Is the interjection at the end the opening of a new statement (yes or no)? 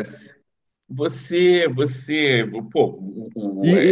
yes